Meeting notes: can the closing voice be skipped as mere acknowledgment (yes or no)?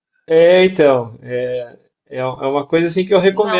no